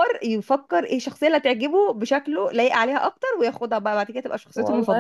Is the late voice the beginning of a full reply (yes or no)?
yes